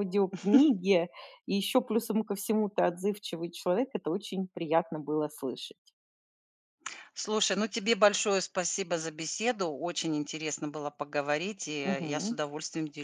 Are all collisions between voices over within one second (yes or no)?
yes